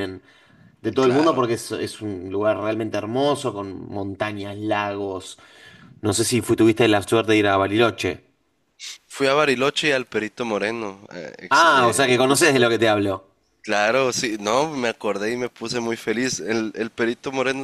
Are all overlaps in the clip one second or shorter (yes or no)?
no